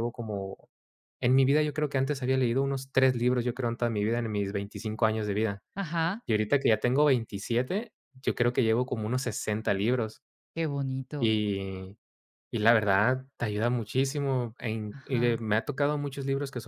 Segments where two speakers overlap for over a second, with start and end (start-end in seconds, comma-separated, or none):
none